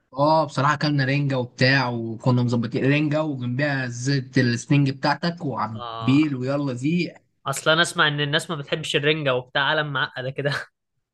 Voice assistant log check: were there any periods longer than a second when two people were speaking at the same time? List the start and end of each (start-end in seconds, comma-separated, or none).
none